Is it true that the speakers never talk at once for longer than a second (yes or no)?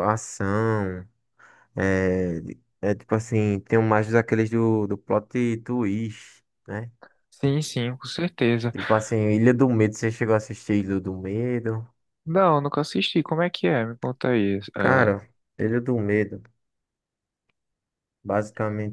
yes